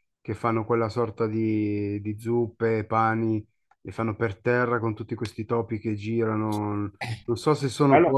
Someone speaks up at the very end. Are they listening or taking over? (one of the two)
taking over